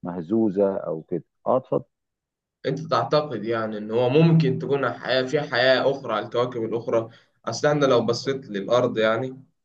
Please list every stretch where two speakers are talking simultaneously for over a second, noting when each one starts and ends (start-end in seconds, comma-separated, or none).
none